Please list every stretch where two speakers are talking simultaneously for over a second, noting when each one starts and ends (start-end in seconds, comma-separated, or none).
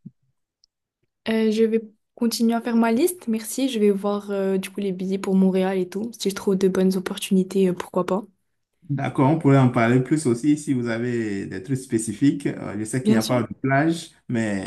none